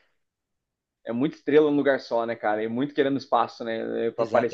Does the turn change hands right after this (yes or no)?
yes